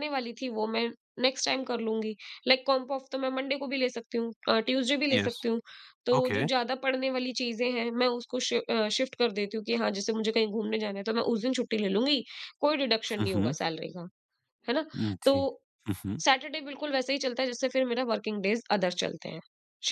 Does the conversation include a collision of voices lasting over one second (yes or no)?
no